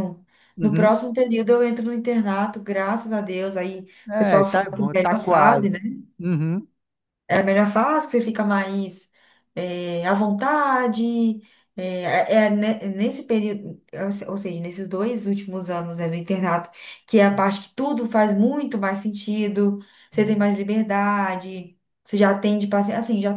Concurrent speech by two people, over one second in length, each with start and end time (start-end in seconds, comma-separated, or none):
4.1-5.7